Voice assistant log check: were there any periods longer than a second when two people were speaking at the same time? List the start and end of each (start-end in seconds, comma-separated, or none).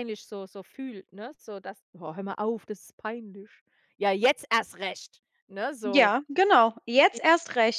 none